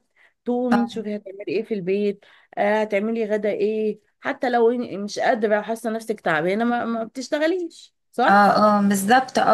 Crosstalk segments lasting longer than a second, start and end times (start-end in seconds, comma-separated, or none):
none